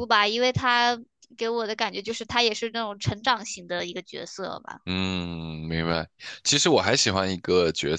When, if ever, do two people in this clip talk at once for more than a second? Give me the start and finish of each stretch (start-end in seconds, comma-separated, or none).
none